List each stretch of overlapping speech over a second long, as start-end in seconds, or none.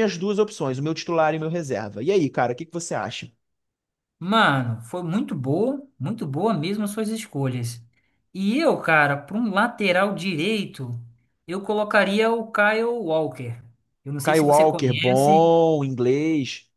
14.2-15.5